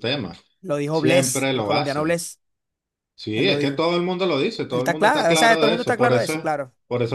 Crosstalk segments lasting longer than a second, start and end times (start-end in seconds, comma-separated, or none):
0.9-2.2, 4.7-6.5